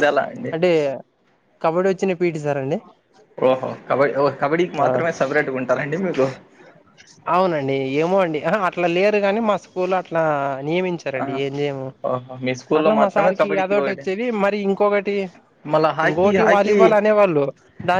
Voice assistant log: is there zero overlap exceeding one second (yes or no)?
yes